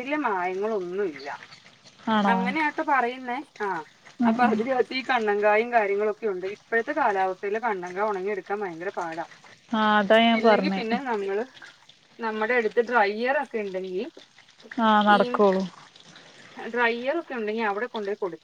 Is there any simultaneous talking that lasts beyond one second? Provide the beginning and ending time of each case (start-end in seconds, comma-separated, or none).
none